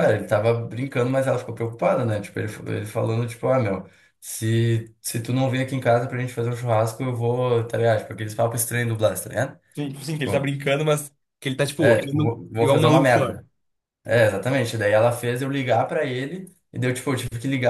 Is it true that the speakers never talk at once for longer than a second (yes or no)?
no